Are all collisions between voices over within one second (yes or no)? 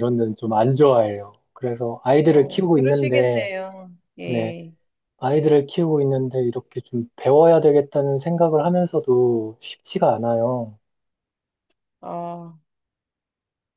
no